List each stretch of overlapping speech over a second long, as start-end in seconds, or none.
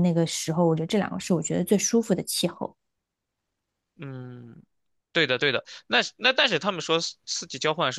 none